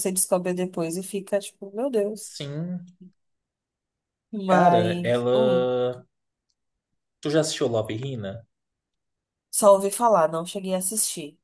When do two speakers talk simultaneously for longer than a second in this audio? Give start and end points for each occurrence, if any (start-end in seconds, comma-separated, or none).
4.5-5.7